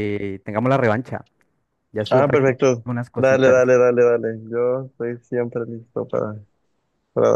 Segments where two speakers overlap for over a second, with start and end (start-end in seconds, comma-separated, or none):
2.1-3.7